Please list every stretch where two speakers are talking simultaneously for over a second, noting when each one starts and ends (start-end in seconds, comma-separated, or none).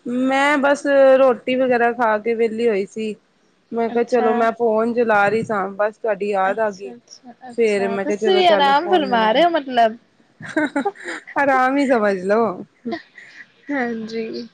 7.6-9.4